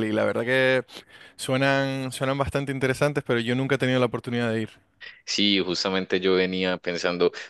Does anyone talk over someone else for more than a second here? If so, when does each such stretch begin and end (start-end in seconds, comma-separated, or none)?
none